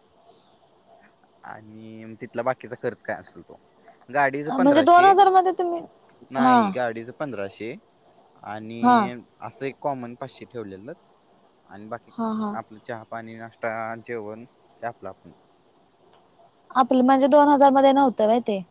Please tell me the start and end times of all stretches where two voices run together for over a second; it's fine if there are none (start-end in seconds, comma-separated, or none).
none